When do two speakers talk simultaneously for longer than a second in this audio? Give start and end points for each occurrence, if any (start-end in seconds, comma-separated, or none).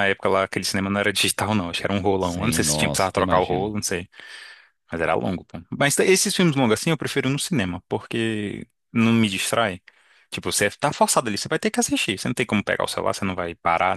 2.2-3.7